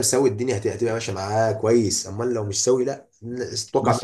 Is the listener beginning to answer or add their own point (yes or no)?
yes